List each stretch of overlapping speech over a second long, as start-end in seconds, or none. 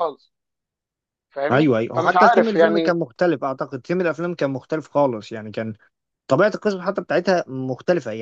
1.5-3.0